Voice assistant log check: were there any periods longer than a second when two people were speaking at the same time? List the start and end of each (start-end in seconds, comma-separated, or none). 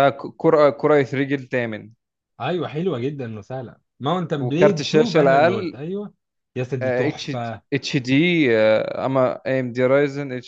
4.4-5.8